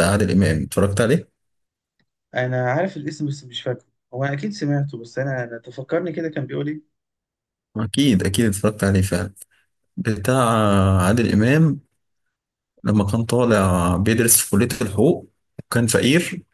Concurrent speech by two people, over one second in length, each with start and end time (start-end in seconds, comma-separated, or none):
none